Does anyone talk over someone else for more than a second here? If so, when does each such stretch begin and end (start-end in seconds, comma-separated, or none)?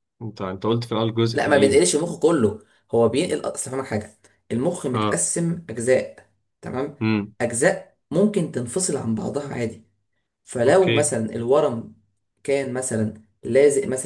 none